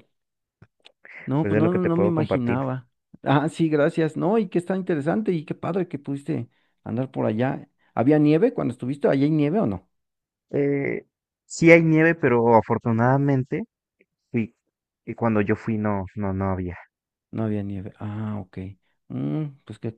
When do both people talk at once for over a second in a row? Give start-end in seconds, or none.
1.4-2.6